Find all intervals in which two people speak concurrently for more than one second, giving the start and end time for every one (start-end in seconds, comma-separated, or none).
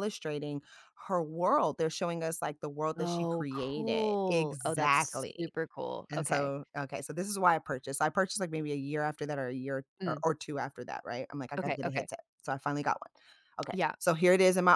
3.0-5.5